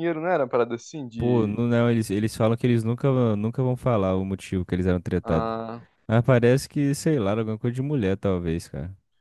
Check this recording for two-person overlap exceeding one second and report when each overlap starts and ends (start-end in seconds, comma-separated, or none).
none